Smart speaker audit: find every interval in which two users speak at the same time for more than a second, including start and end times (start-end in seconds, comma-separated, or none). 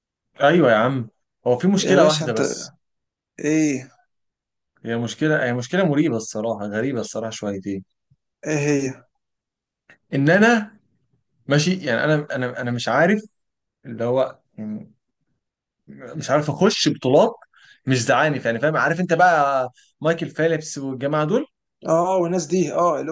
none